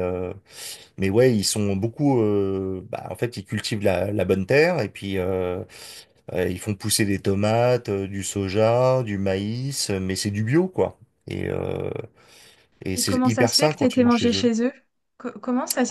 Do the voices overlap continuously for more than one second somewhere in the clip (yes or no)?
yes